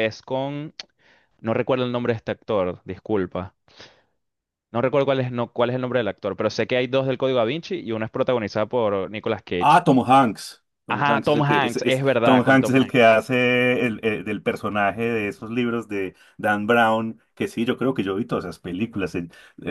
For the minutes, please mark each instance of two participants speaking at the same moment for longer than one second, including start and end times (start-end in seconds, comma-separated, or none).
10.9-13.1